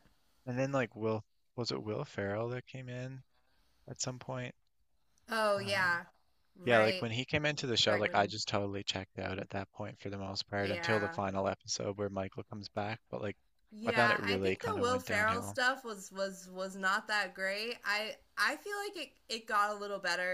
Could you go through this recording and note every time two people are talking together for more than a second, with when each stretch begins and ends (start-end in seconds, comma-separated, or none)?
13.8-15.6